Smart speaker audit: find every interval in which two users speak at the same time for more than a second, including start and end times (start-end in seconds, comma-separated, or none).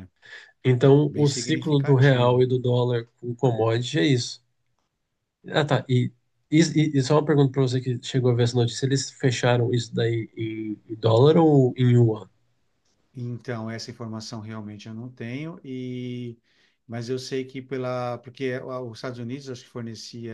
1.1-2.5